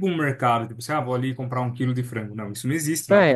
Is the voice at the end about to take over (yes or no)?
yes